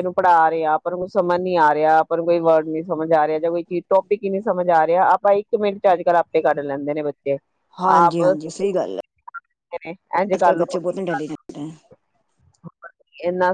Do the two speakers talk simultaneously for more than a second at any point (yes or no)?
yes